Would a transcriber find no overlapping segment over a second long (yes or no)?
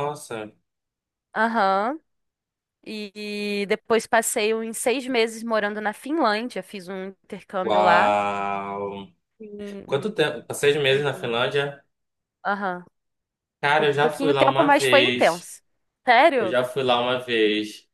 no